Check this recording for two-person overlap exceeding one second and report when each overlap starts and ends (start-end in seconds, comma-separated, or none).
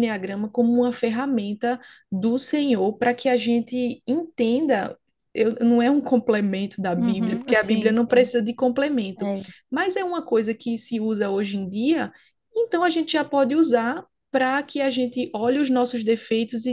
7.0-8.3